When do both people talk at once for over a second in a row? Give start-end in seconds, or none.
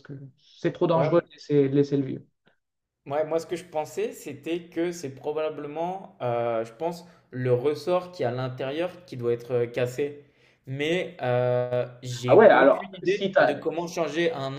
12.3-13.6